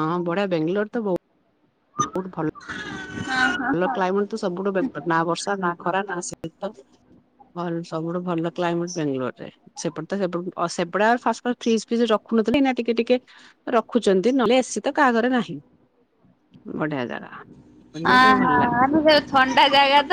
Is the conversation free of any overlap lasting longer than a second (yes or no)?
yes